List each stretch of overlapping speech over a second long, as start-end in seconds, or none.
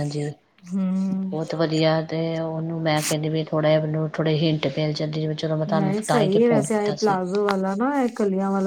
5.8-7.2